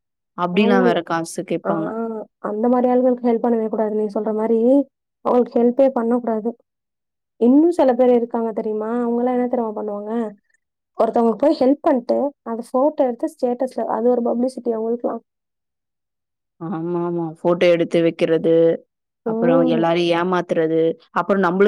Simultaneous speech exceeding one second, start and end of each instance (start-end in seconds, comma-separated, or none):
none